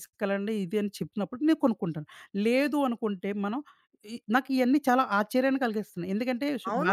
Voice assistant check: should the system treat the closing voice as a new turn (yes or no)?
yes